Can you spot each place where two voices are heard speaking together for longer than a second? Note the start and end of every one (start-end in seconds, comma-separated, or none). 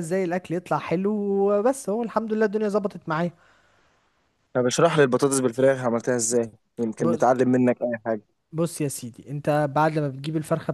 none